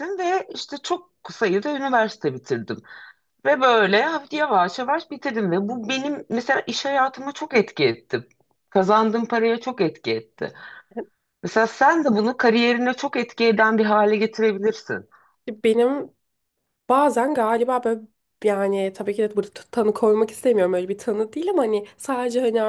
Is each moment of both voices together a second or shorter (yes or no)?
yes